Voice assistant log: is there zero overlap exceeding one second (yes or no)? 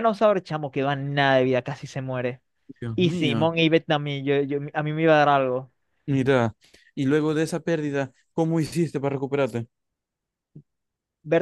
yes